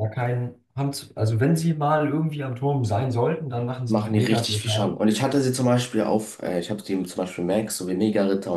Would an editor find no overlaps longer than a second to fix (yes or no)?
no